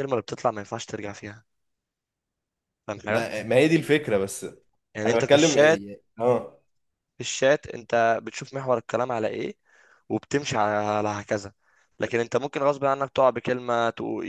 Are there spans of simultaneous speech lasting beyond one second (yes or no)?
no